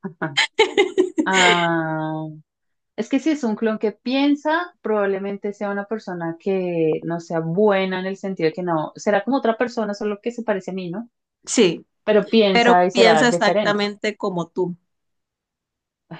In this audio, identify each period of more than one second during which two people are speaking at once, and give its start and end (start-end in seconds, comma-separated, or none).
12.5-13.9